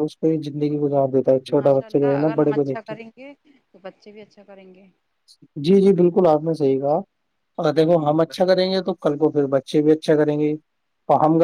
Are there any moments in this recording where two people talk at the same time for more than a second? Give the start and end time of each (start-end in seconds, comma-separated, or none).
1.6-3.0